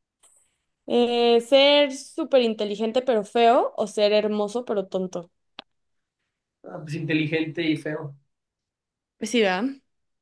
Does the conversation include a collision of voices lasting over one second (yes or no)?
no